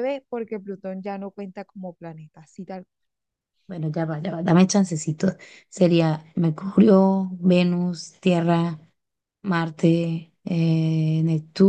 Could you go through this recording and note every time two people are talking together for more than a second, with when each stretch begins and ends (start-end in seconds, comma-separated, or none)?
none